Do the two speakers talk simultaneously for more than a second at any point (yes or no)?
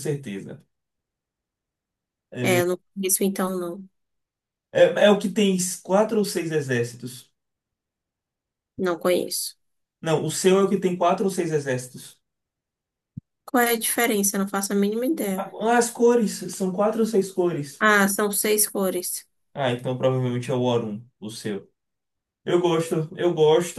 no